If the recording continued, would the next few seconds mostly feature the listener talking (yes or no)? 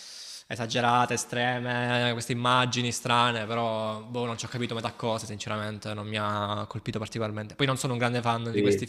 no